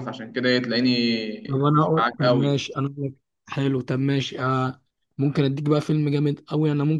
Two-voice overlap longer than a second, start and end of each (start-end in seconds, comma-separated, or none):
1.5-2.7